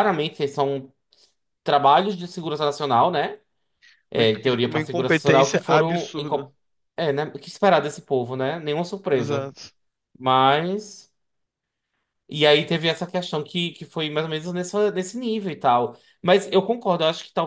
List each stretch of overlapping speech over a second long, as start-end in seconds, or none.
4.1-6.5